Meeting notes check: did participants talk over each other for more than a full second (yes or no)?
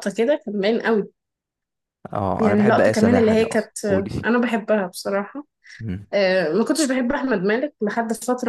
yes